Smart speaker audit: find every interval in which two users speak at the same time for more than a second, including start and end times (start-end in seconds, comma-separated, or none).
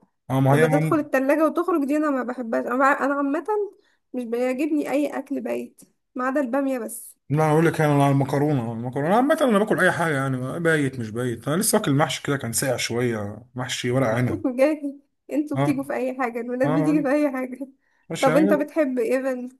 none